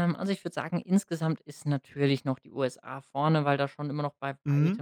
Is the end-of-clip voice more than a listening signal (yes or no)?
no